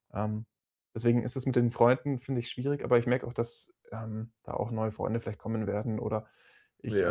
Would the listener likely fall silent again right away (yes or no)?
no